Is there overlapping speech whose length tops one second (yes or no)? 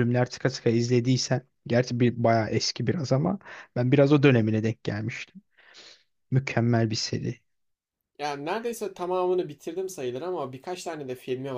no